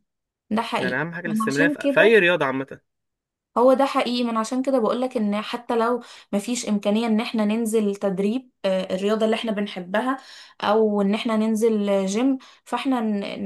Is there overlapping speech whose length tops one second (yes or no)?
yes